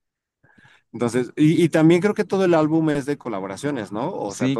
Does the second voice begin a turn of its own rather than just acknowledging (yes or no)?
yes